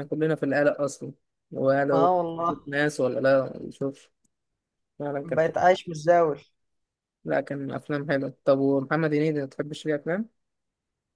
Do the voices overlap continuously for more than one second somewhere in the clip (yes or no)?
no